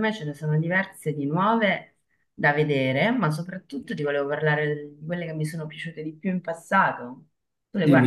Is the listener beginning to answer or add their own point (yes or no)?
yes